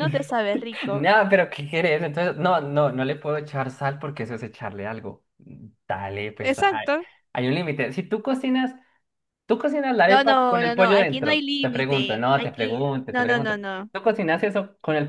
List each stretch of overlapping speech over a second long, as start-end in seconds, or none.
10.1-13.9